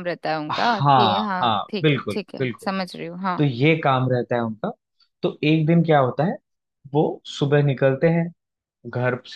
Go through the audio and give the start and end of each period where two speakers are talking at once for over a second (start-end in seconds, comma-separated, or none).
0.5-2.7